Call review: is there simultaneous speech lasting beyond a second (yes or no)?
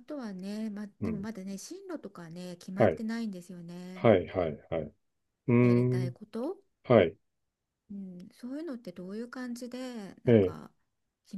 no